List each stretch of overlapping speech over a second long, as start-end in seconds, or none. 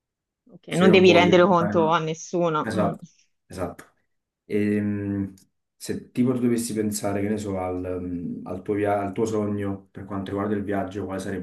0.7-2.0